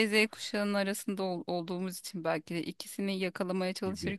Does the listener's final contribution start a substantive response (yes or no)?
no